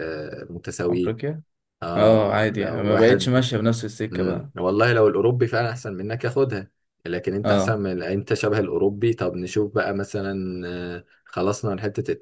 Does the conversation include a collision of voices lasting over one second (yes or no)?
yes